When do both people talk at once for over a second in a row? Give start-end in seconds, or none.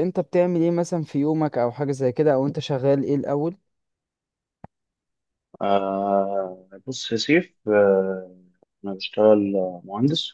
none